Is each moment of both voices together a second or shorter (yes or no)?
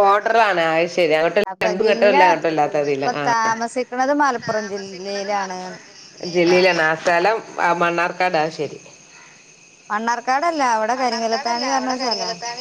yes